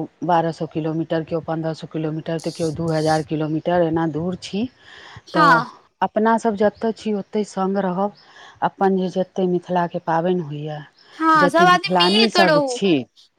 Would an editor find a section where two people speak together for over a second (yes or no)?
yes